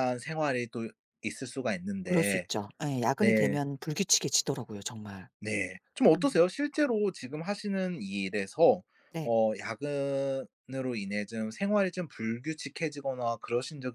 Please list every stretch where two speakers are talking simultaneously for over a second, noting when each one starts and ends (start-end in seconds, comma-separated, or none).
none